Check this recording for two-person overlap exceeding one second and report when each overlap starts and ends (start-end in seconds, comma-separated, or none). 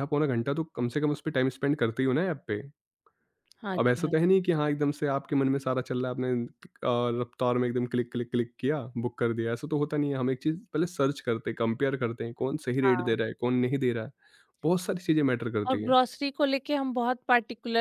none